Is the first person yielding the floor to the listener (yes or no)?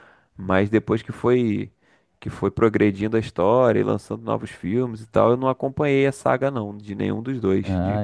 no